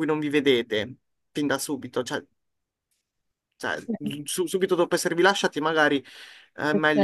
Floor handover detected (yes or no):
no